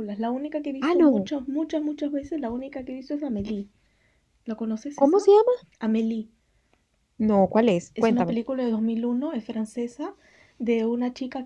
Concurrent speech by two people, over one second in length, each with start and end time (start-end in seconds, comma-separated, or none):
none